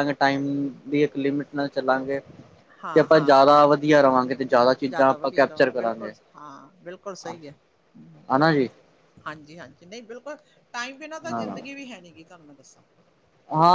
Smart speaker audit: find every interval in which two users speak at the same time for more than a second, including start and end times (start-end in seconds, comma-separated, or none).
4.9-6.2